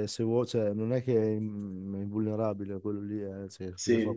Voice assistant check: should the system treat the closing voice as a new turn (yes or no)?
no